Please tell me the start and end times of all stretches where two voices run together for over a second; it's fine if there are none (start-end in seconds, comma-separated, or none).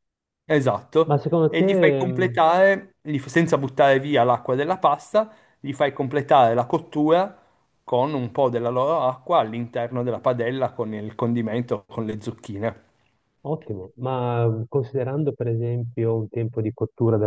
1.0-2.4